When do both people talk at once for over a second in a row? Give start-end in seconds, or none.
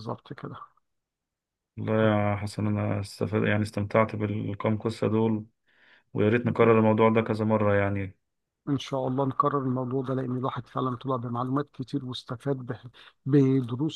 none